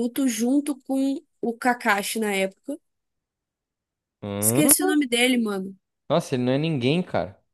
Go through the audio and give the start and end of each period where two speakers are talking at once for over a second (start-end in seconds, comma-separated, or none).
none